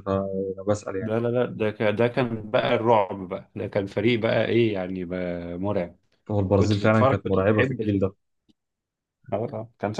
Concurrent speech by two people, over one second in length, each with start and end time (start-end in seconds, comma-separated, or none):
6.5-8.1